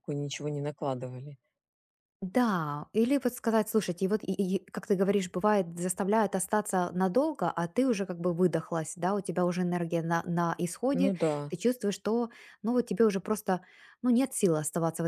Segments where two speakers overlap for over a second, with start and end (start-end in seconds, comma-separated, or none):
none